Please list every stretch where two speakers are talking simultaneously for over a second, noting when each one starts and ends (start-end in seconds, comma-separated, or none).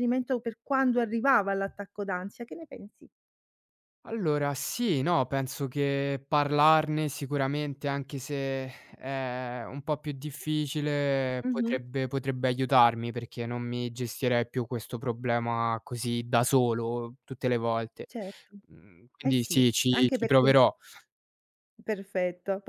19.2-20.5